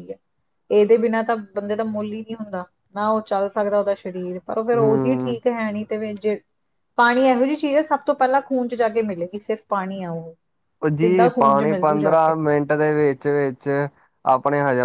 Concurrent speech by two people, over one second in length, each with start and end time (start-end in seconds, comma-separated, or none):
11.0-12.3